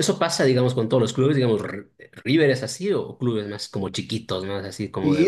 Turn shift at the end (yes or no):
yes